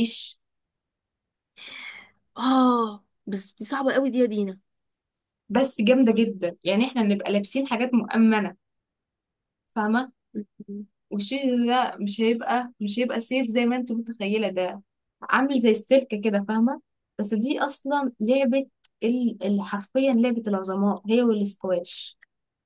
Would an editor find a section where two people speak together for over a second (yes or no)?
no